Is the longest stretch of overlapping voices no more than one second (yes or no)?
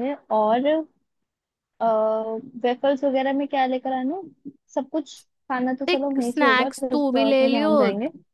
no